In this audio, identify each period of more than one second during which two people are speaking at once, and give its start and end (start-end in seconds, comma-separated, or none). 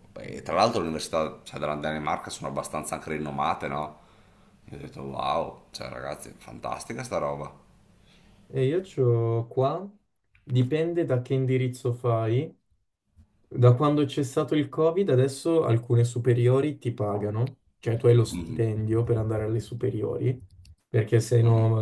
none